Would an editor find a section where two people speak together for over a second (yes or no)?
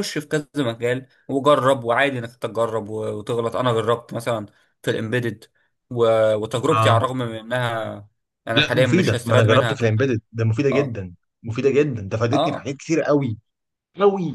yes